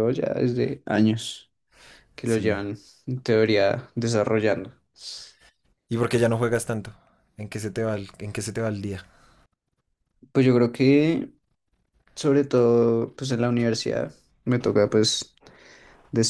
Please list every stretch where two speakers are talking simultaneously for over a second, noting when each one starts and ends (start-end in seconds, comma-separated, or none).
none